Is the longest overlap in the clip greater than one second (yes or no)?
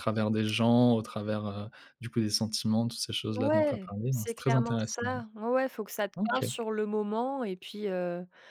yes